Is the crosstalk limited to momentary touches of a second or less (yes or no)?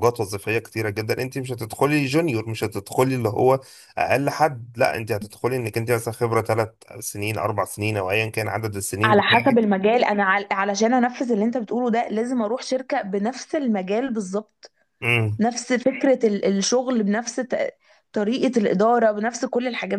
yes